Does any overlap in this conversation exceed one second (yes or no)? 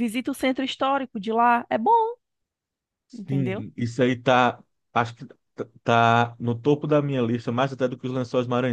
no